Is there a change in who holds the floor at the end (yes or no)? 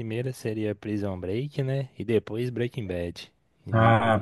yes